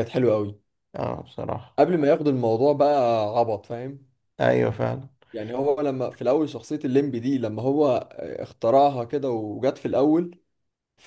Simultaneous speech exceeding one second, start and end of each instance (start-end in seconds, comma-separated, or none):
none